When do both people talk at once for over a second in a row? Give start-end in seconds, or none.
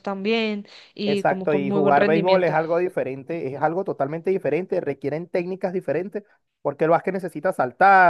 1.1-2.6